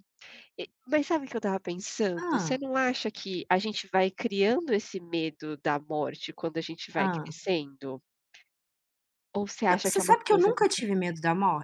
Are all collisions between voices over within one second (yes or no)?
no